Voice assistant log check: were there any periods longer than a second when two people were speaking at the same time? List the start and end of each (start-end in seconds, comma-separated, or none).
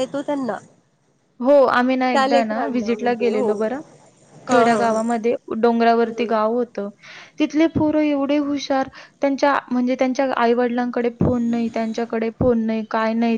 2.1-3.5